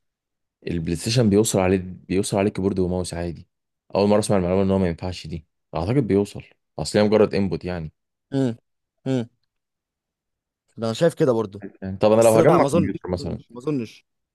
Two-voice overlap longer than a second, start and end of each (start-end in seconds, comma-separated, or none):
12.1-13.4